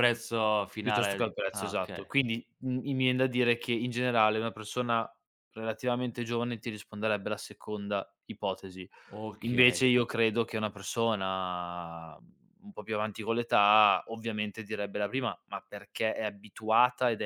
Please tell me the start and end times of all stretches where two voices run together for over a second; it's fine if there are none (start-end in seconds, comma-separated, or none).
0.8-2.1